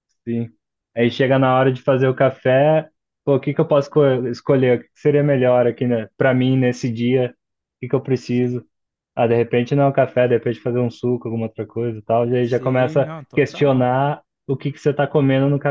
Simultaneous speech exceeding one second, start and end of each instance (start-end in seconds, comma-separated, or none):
12.4-13.9